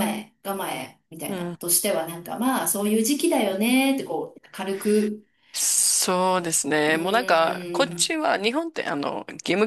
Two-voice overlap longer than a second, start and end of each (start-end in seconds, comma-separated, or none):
6.8-8.1